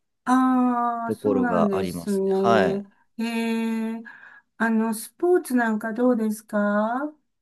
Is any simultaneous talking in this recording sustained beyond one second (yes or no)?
yes